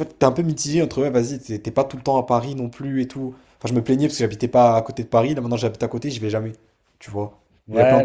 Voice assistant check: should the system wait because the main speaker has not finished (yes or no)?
no